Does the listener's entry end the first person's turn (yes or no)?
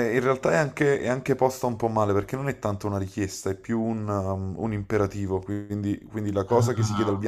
no